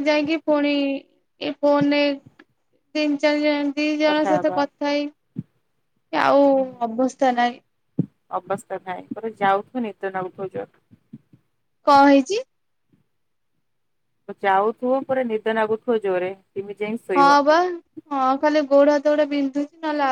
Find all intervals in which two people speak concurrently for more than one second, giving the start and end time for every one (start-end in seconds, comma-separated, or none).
none